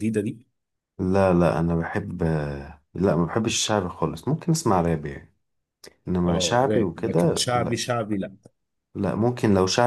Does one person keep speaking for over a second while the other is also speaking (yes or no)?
yes